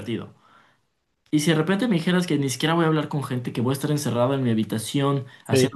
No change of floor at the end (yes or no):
yes